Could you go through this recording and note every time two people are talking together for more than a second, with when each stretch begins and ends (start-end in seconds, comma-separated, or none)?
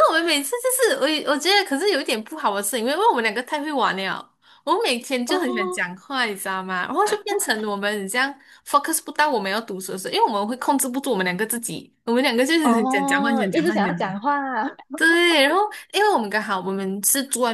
12.6-14.4